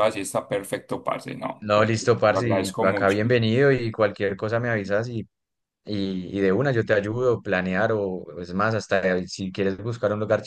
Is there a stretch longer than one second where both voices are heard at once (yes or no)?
yes